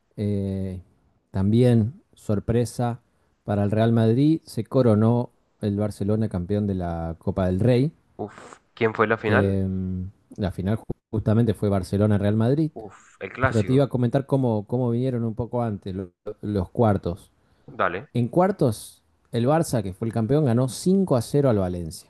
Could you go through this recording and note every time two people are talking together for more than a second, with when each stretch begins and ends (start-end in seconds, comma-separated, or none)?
none